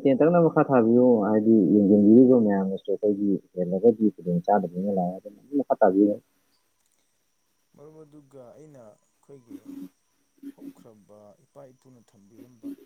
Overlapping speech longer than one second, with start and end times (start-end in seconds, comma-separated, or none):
none